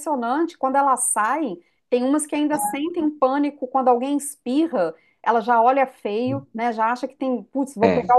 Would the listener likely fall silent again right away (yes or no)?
yes